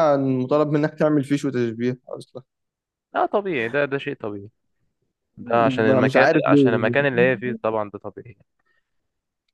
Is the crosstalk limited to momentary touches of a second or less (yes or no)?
no